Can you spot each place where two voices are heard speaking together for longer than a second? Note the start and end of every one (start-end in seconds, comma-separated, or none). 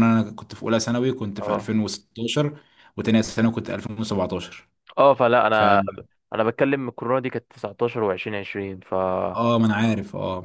none